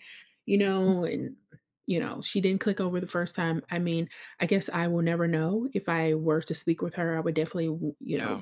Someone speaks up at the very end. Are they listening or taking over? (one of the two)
listening